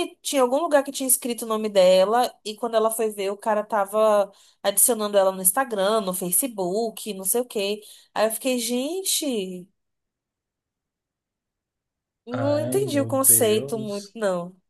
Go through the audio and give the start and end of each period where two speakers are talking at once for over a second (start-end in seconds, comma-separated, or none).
12.3-14.2